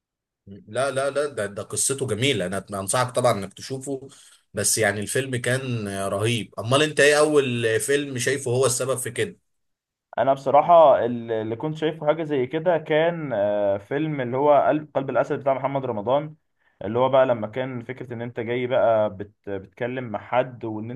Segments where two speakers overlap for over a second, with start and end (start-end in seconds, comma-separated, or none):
none